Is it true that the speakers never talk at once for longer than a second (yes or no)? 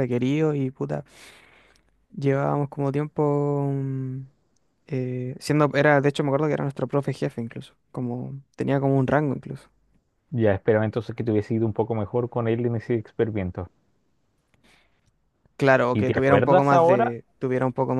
no